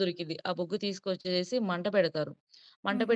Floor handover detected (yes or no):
no